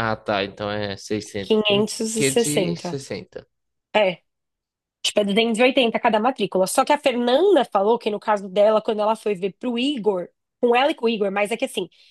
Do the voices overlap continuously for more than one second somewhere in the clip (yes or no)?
yes